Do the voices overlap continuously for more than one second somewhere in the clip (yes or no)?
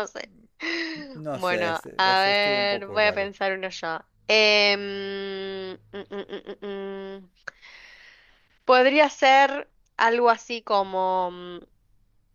yes